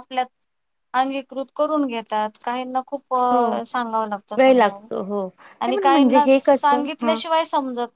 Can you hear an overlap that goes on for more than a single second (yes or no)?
yes